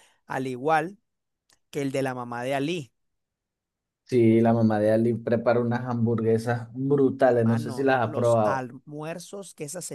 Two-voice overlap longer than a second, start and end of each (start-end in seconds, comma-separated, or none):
7.3-8.7